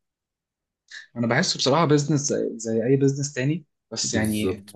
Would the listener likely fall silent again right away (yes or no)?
no